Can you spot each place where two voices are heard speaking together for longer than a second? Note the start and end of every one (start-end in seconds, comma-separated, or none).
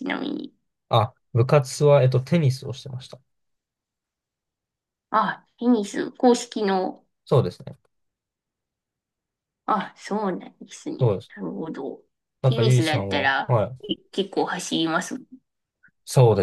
12.4-13.8